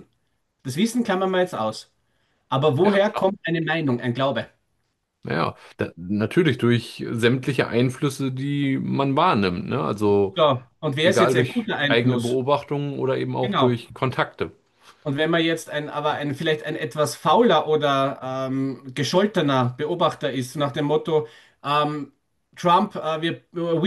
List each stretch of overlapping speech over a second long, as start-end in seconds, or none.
11.0-12.4